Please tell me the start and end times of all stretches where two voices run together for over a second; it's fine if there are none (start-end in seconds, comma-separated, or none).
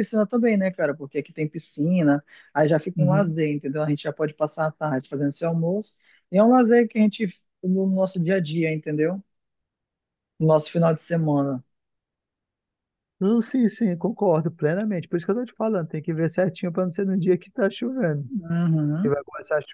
none